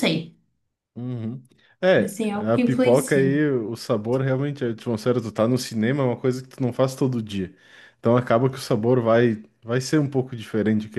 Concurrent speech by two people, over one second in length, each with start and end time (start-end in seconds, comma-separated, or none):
2.0-3.4